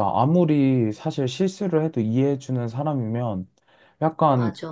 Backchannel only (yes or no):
yes